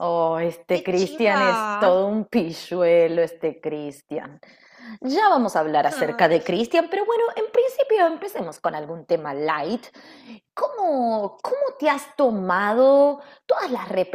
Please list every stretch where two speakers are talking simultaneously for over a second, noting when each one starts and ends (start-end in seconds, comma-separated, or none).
0.7-1.9